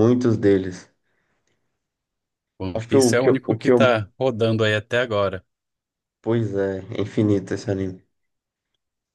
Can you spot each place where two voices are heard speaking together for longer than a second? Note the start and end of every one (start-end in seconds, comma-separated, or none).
2.7-4.0